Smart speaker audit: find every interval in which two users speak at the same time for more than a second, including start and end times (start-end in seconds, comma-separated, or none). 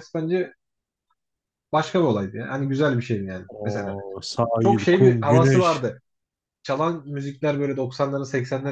4.6-5.8